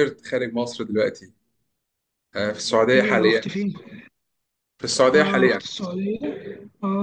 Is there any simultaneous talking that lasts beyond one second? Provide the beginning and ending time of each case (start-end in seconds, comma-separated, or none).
none